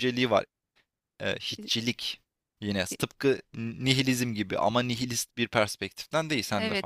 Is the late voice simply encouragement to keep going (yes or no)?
no